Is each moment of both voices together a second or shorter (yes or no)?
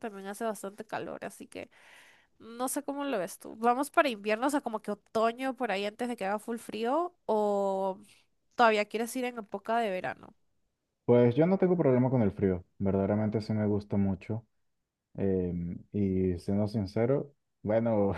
yes